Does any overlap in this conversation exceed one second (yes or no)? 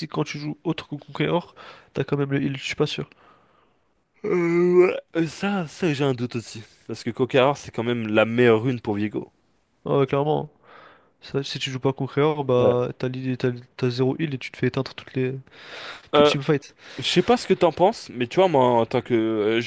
no